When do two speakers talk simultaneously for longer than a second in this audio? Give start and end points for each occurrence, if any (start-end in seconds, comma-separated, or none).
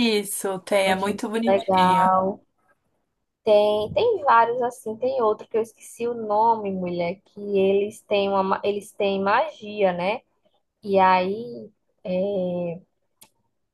0.8-2.1